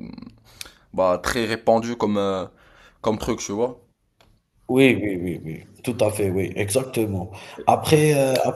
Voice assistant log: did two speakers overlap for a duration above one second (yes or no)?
no